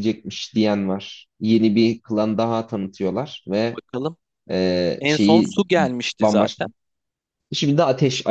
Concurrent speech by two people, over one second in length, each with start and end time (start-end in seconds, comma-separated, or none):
none